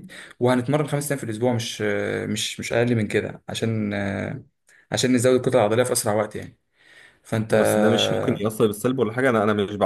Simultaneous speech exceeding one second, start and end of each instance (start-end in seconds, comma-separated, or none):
none